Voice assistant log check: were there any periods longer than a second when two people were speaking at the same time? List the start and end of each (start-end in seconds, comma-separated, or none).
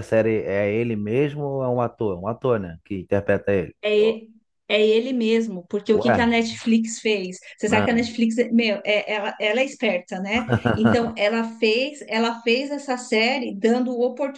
none